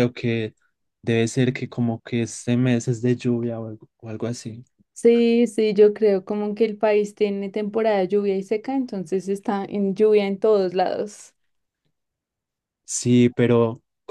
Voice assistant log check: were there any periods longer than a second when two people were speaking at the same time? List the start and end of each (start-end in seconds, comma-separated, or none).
none